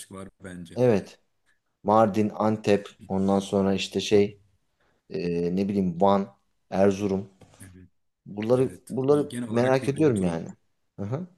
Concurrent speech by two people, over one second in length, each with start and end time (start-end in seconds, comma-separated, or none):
8.6-10.4